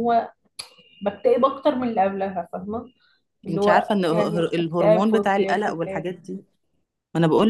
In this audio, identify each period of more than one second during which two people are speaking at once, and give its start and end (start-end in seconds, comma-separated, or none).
3.5-6.0